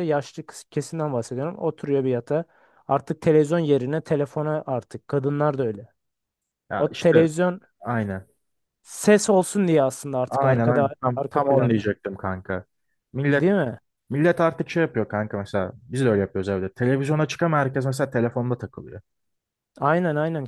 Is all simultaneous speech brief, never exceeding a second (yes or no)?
no